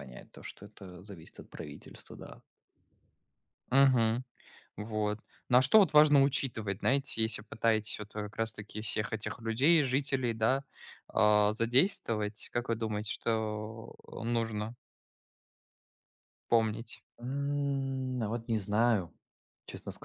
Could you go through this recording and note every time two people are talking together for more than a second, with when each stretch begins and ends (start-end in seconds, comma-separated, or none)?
none